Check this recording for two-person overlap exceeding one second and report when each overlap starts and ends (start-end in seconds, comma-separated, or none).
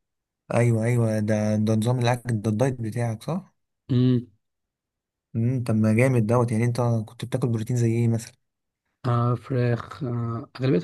none